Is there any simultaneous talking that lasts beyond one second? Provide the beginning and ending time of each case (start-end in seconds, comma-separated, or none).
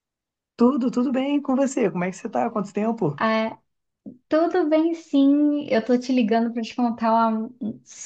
none